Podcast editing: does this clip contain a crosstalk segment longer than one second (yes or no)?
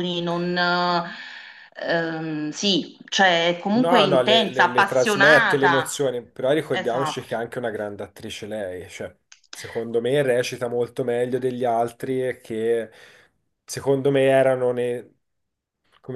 yes